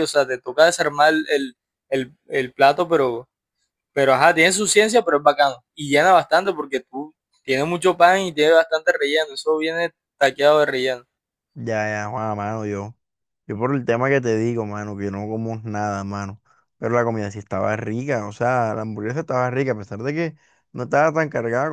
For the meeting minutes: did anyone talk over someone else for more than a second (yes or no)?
no